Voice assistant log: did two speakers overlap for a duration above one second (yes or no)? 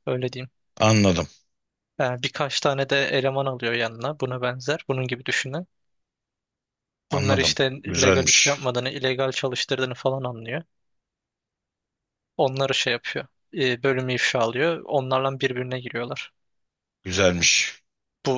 yes